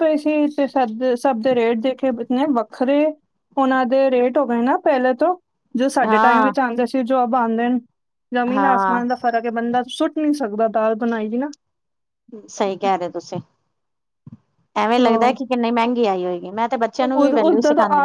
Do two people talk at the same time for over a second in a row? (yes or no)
no